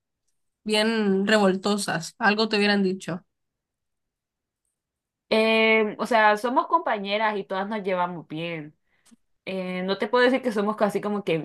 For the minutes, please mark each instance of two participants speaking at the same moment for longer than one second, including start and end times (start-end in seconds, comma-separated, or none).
none